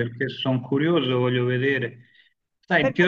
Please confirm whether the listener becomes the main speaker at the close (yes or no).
no